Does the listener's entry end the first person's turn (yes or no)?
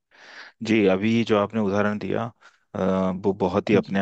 no